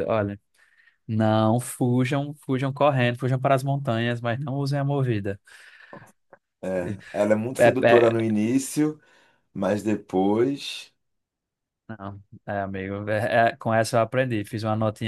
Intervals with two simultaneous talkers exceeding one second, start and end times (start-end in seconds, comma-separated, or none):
none